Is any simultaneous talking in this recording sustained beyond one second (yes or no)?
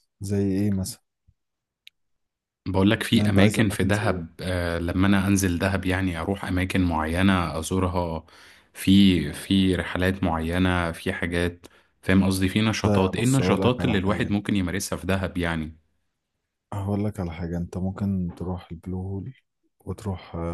yes